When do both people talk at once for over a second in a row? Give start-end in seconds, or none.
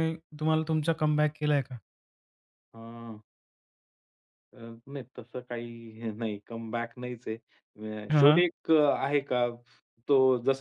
none